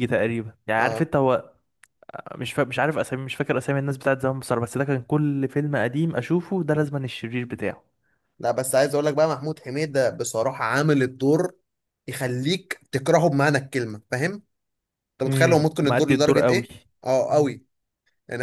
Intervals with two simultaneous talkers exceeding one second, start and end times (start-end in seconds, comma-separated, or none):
15.3-16.7